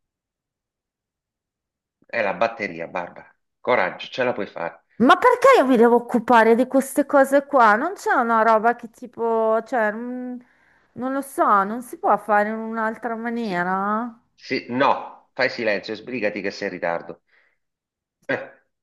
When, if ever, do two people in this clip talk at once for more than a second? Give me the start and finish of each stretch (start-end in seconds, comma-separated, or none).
none